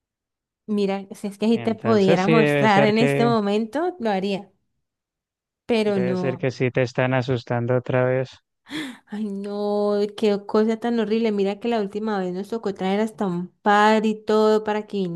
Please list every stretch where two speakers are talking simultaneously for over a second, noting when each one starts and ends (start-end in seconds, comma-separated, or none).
1.5-3.3